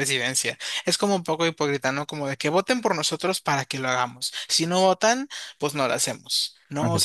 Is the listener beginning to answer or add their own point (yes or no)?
no